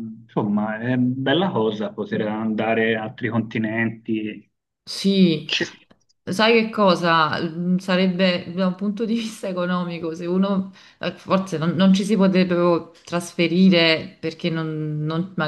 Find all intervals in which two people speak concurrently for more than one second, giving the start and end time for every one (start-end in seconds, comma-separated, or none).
none